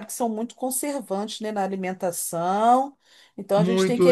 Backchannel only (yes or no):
no